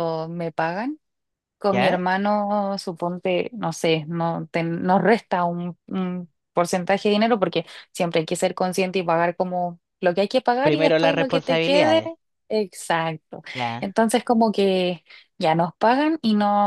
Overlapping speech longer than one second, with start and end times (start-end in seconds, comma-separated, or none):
10.6-12.0